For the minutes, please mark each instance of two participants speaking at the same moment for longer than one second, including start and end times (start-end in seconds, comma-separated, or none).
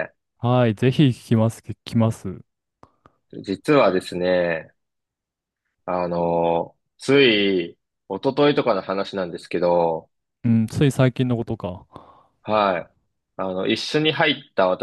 none